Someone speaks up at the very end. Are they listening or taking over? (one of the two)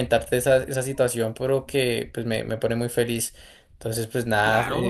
taking over